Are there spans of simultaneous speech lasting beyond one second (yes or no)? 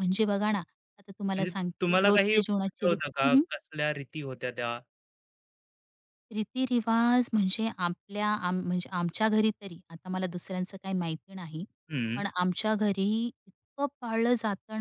yes